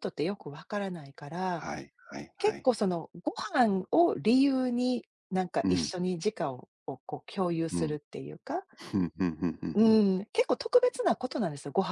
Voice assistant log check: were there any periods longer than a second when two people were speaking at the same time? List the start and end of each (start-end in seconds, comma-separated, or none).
none